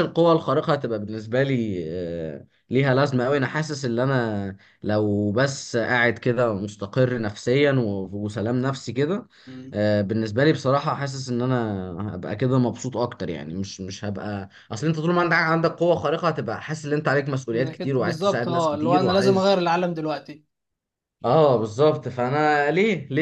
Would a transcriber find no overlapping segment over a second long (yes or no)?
no